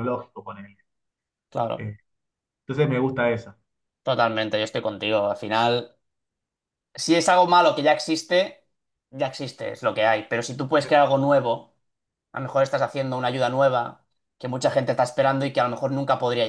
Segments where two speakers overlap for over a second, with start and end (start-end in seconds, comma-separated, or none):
none